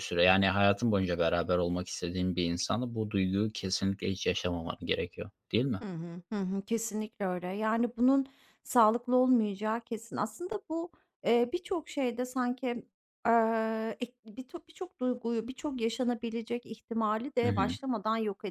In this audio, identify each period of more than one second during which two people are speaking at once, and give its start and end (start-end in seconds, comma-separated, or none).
none